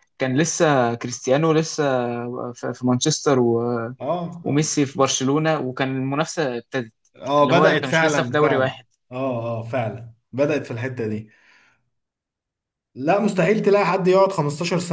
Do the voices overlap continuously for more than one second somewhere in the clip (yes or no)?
yes